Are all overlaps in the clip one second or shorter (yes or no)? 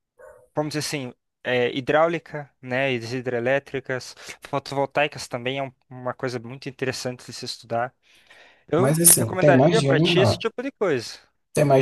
no